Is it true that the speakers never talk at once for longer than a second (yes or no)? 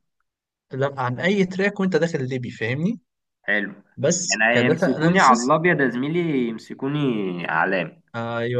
no